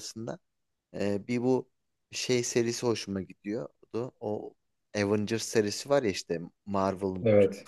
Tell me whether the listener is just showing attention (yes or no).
yes